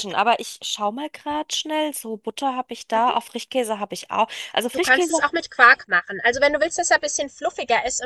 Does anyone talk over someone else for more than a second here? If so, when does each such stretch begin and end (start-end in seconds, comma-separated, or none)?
none